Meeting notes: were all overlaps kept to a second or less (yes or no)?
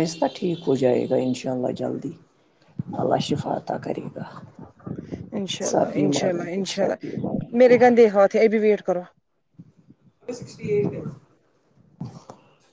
no